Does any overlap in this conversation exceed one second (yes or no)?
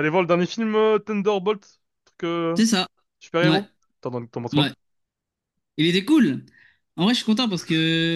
no